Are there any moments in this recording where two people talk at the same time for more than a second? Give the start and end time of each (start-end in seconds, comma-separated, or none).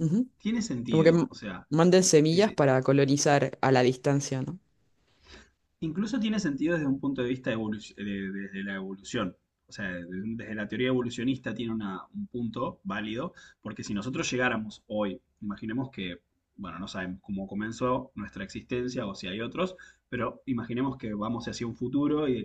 none